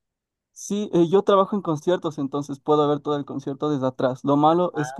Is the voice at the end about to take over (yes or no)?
no